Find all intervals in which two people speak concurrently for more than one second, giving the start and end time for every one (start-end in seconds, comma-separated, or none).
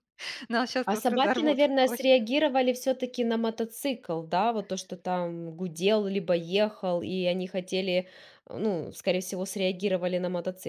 0.8-2.1